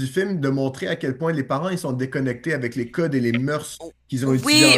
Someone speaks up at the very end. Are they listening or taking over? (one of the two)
listening